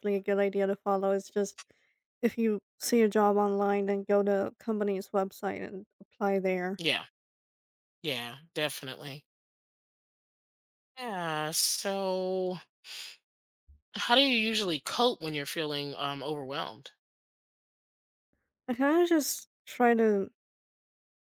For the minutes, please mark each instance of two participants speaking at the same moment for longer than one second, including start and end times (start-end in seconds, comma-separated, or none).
none